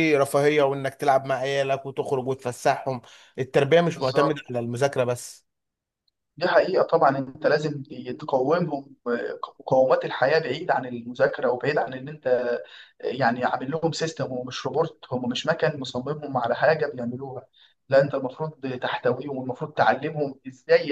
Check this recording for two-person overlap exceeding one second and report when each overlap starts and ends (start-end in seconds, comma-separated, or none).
none